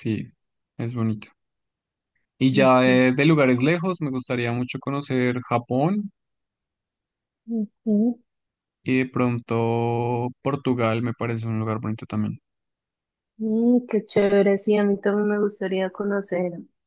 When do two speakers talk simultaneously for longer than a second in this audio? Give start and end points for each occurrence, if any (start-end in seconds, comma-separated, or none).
none